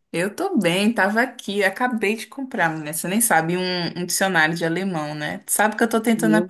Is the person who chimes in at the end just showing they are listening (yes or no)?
yes